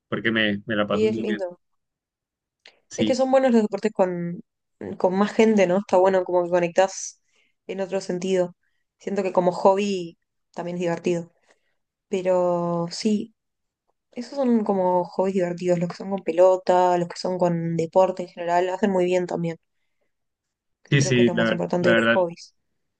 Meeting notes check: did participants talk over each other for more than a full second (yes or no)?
yes